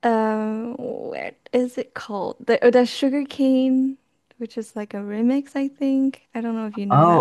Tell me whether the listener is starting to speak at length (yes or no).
yes